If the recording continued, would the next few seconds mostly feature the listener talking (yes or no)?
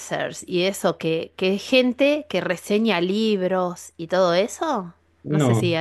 no